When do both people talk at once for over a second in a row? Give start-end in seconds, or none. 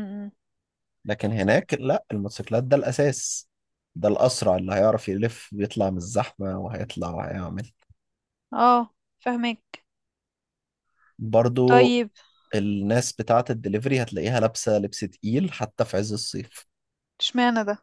none